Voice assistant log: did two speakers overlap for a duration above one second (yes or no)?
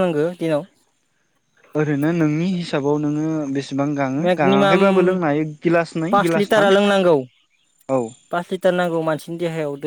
no